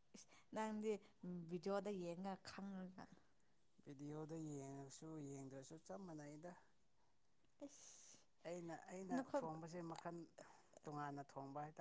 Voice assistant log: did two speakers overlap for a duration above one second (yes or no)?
no